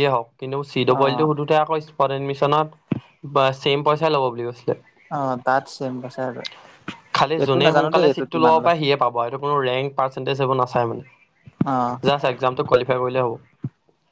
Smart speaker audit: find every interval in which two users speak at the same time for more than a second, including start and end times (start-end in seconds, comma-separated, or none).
none